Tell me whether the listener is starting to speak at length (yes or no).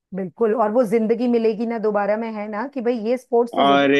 yes